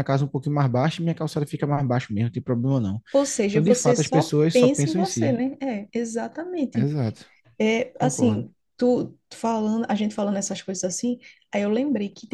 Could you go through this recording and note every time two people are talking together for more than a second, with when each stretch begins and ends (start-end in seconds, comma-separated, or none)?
3.5-5.4